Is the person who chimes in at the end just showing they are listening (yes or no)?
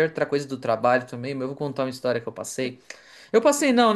yes